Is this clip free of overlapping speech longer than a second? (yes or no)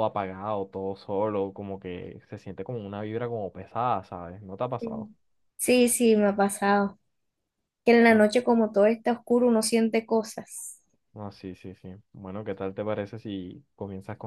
yes